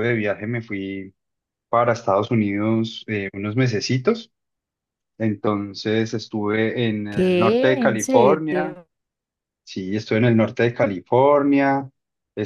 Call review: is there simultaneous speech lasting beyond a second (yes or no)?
yes